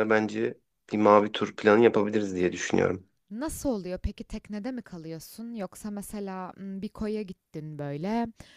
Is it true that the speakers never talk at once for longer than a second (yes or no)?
yes